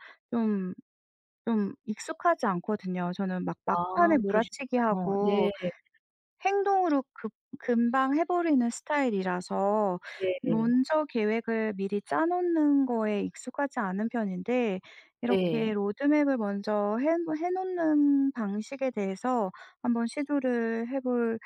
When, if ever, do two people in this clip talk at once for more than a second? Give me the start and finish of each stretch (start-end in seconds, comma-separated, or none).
3.7-5.5